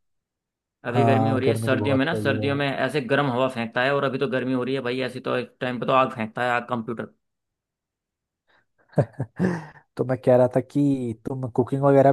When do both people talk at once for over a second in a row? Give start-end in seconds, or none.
0.9-2.6